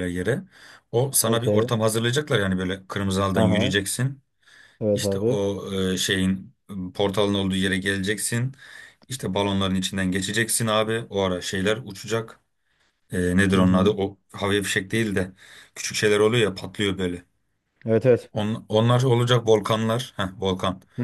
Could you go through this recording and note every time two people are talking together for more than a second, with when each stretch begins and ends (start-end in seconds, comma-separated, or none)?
none